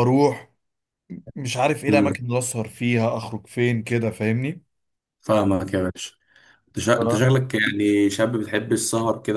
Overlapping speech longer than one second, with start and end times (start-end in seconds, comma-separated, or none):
none